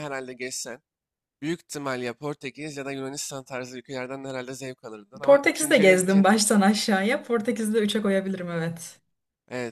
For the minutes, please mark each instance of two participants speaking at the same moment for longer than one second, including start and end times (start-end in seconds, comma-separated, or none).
5.2-6.4